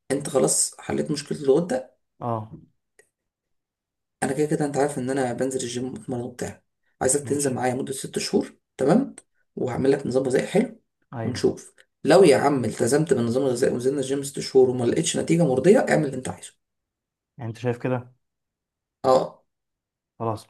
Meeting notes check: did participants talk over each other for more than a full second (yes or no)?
no